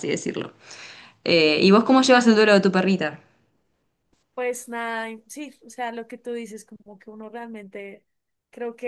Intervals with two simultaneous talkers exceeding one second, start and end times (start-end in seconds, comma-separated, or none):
none